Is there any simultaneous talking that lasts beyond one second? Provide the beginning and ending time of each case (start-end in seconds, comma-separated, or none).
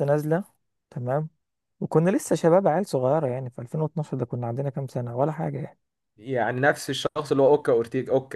none